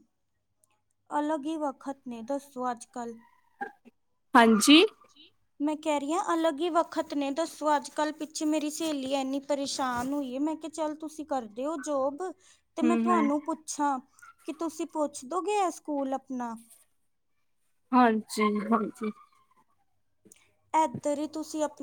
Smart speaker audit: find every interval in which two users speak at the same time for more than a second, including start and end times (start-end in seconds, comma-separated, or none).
none